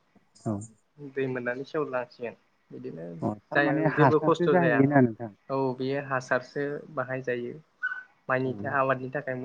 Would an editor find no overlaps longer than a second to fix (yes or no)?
no